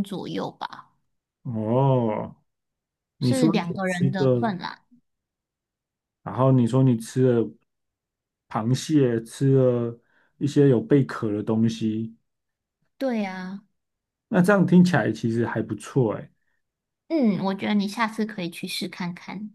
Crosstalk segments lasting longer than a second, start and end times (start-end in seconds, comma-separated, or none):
3.2-4.5